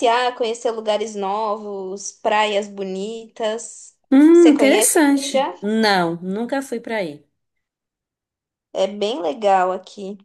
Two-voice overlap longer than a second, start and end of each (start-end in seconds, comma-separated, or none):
4.3-5.5